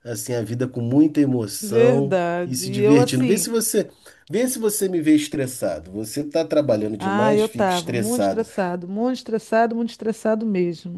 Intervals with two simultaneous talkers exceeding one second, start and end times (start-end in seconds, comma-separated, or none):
1.6-3.5, 7.0-8.4